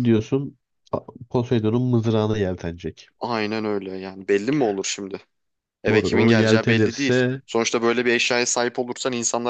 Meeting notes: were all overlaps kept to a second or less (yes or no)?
no